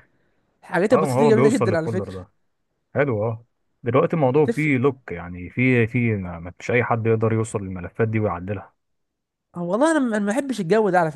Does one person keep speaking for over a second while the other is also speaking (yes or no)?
yes